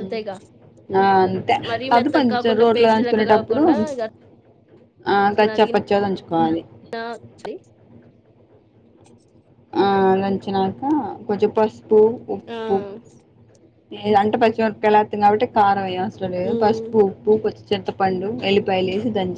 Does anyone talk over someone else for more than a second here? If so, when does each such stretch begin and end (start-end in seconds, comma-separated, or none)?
2.0-3.6